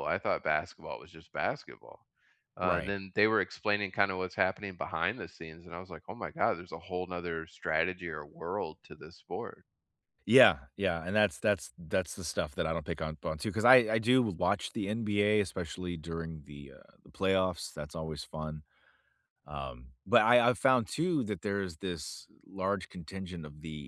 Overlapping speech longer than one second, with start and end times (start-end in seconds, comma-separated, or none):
none